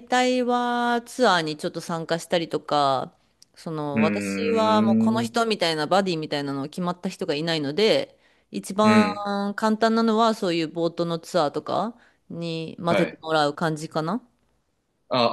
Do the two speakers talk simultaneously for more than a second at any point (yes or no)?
yes